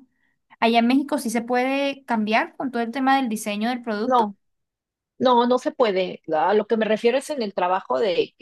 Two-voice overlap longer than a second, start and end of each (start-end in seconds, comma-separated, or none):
none